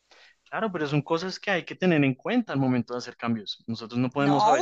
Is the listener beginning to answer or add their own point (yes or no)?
yes